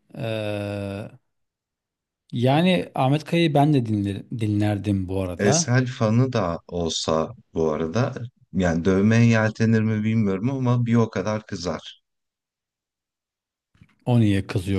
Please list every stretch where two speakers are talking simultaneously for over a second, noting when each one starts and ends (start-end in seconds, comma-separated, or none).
none